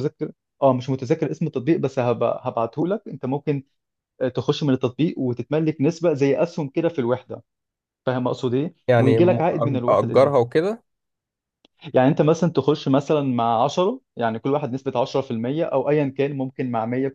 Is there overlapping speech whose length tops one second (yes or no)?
yes